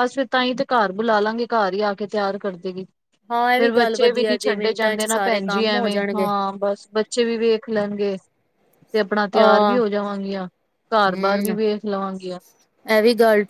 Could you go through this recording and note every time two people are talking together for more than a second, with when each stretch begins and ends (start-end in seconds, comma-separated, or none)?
3.6-6.3